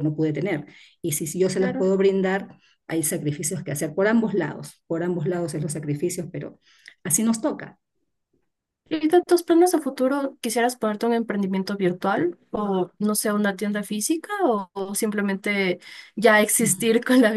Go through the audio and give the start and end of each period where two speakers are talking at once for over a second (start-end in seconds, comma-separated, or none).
none